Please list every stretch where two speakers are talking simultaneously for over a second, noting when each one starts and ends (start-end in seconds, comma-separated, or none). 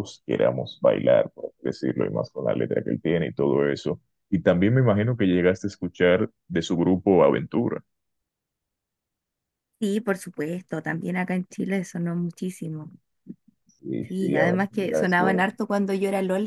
14.0-15.5